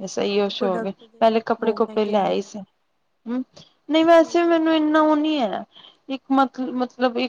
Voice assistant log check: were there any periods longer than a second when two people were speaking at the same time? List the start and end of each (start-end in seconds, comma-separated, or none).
0.6-2.6